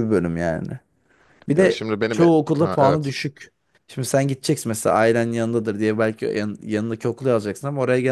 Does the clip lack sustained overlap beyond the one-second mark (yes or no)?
no